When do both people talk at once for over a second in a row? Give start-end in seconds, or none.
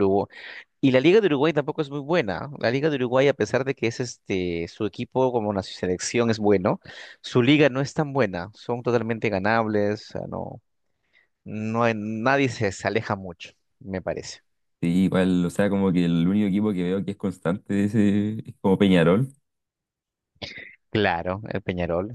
none